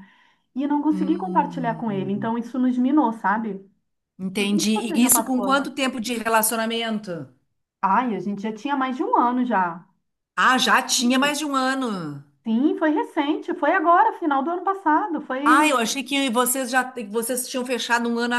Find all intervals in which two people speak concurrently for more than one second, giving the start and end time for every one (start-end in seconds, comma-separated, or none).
0.9-2.3, 4.4-5.7